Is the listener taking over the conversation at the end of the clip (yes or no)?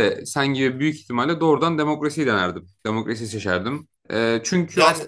no